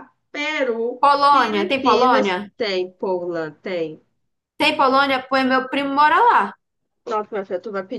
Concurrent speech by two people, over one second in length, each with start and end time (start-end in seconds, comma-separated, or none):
1.0-2.5